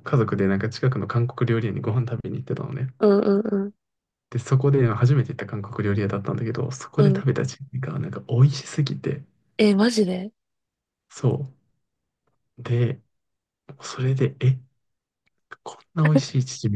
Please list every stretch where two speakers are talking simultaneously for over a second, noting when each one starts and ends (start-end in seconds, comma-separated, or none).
none